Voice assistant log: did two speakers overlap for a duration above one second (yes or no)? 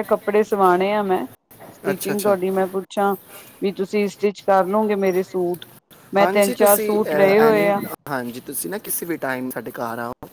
yes